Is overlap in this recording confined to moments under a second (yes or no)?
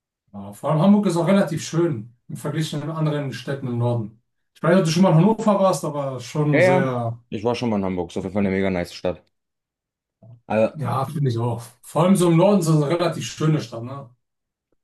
yes